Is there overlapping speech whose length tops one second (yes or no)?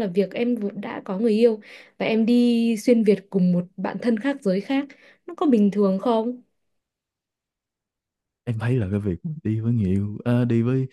no